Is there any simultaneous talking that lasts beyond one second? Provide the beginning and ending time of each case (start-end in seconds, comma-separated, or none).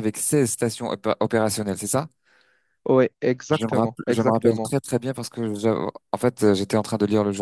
3.5-4.7